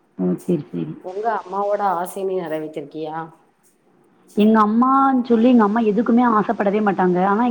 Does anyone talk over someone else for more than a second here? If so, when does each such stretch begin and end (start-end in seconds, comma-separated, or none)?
none